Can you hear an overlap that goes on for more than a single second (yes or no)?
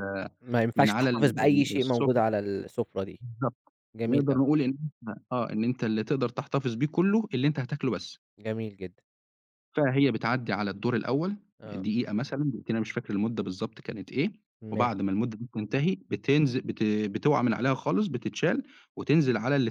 yes